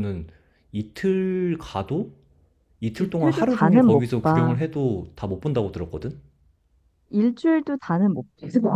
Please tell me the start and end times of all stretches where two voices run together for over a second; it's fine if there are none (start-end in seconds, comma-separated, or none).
3.0-4.5